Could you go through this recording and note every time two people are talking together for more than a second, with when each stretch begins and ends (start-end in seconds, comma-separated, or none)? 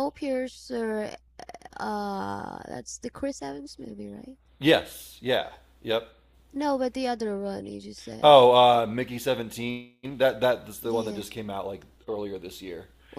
none